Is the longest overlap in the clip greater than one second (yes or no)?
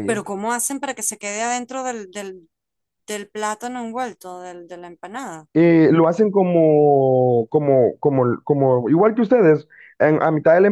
no